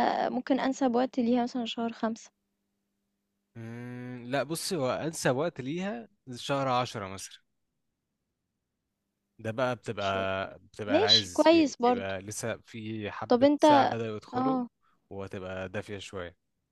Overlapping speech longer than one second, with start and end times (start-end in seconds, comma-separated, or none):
10.9-12.1